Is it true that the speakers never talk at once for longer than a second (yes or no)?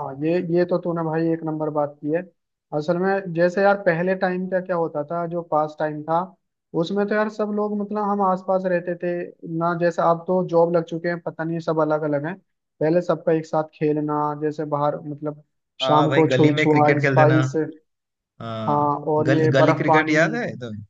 no